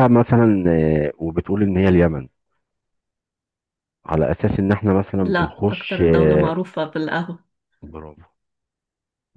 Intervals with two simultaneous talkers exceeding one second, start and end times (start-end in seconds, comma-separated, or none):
5.2-6.5